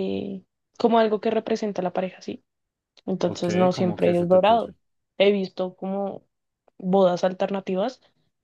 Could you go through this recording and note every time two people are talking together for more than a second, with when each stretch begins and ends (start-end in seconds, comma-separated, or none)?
3.2-4.7